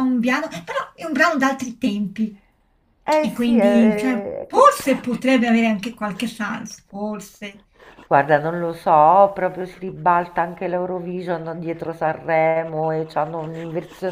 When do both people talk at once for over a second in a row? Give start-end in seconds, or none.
3.2-4.7